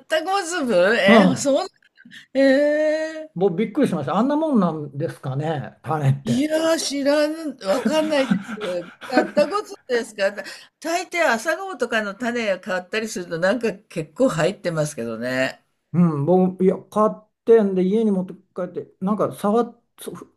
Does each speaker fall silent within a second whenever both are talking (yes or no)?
yes